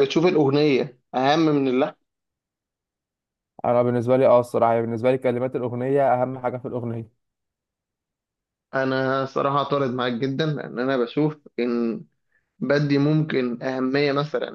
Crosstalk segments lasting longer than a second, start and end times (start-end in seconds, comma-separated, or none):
none